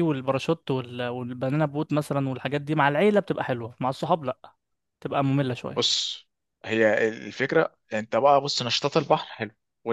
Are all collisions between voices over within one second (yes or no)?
yes